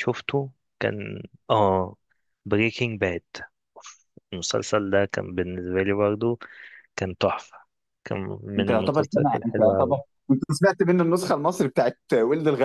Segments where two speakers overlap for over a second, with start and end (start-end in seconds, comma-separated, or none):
8.6-9.9